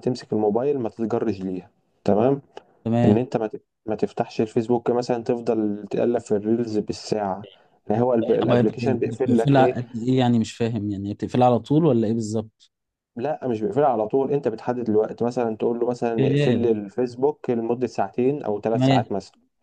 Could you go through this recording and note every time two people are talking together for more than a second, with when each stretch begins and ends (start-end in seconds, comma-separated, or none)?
8.4-9.8